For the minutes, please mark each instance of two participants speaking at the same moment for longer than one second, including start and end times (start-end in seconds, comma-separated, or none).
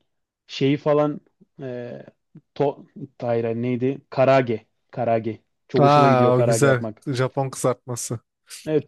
5.8-7.0